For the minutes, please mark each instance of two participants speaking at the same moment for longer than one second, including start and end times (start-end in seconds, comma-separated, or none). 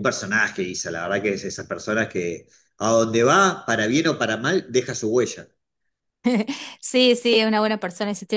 none